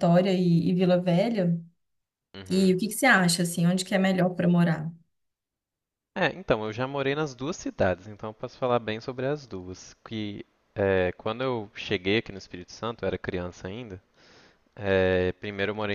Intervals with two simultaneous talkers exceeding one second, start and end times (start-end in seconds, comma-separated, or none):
none